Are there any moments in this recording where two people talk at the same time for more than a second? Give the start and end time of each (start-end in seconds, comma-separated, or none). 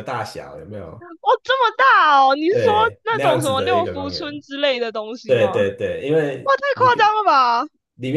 2.5-4.4